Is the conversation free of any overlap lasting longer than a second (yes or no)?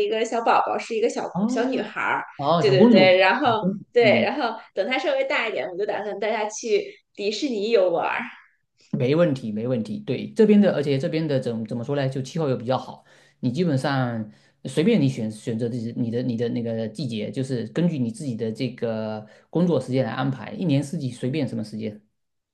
no